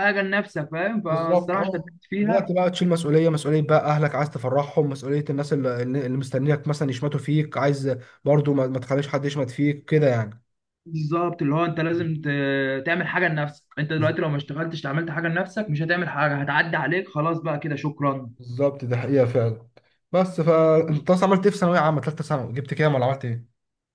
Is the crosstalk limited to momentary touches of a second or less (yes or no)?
no